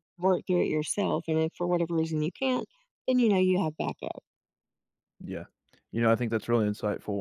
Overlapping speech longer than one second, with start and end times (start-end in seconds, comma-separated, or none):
none